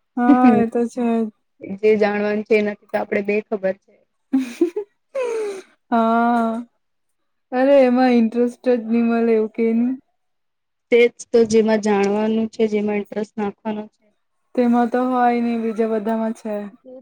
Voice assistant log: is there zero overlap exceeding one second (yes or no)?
yes